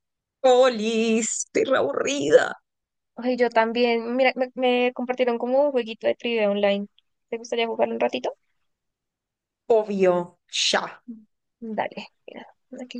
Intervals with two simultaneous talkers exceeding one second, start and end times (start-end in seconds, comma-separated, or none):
none